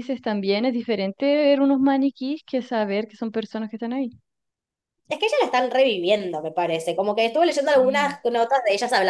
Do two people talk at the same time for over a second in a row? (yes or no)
no